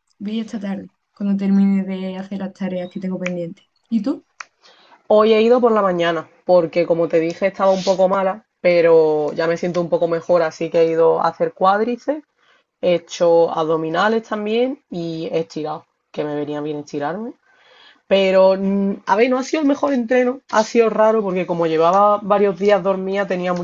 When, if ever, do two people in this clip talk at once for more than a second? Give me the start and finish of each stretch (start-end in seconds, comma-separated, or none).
none